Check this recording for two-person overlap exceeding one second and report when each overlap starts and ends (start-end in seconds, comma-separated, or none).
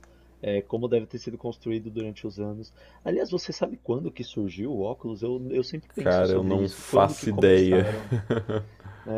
6.0-7.9